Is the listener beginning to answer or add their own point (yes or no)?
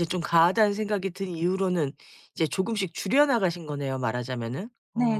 yes